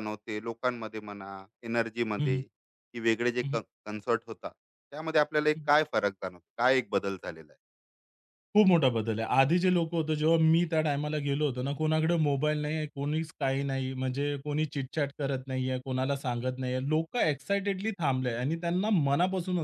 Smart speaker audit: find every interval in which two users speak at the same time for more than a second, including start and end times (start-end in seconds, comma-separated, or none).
none